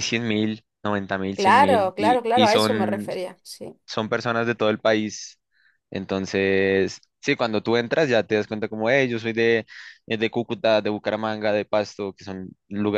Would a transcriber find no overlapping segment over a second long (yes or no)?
no